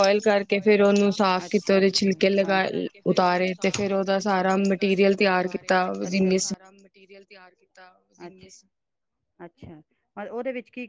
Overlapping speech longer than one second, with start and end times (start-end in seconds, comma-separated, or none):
none